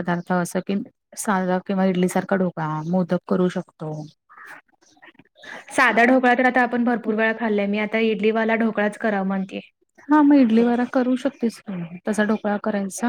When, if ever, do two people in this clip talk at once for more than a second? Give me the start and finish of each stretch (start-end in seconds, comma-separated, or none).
none